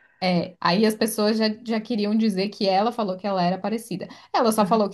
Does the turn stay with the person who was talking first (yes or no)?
yes